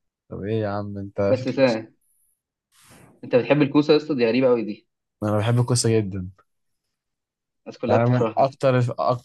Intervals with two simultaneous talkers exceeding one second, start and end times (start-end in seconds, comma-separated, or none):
none